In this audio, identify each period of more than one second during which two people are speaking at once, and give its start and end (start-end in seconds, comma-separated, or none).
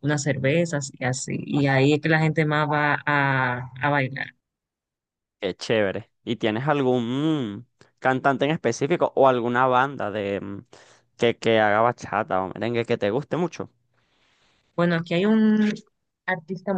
none